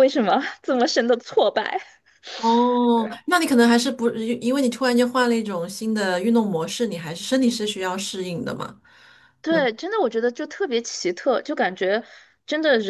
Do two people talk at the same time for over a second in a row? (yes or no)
no